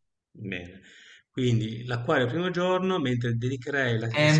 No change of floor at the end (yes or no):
no